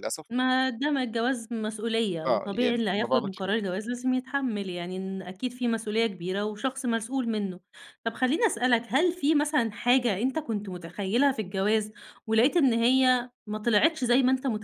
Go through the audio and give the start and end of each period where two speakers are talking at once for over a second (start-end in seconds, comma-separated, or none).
2.3-3.5